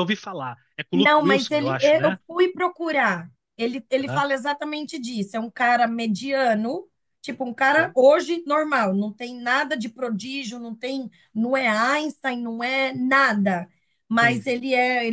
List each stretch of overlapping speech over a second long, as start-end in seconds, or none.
0.9-2.2